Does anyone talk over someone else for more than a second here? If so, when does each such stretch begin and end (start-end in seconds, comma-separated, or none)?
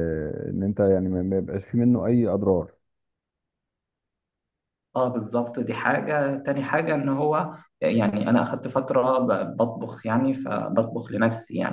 none